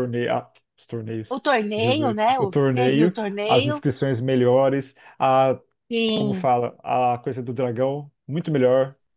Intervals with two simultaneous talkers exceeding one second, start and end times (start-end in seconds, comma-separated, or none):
1.3-3.8